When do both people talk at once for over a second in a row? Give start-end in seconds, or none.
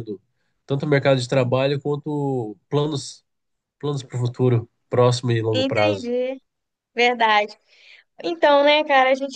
none